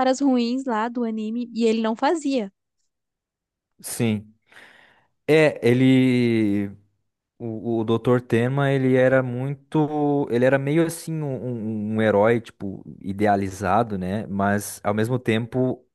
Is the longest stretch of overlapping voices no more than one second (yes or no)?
yes